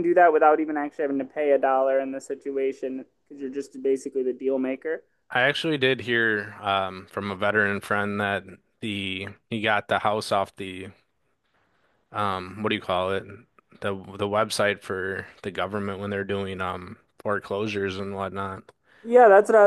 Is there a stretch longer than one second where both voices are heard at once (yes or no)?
no